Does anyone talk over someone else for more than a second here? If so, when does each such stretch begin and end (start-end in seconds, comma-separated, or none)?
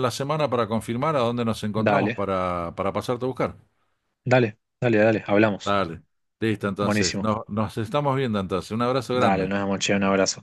none